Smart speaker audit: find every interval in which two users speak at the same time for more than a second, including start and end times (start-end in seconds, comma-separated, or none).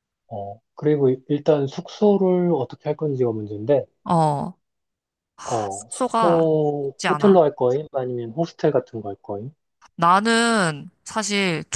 5.7-7.4